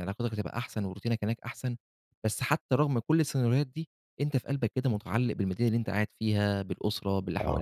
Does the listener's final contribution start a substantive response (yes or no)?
no